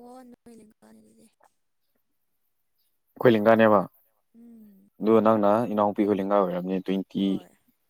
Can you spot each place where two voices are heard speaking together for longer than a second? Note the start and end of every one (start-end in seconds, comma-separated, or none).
none